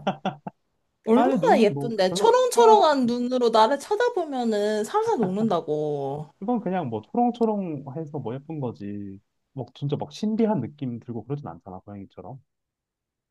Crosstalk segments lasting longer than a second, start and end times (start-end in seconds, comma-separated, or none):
1.1-2.8